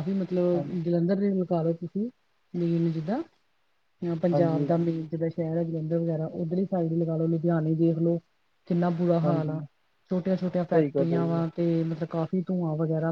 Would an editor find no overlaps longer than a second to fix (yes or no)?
yes